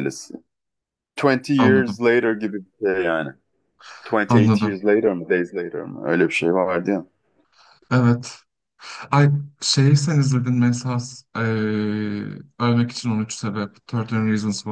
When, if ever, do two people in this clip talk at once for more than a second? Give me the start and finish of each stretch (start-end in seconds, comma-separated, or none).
none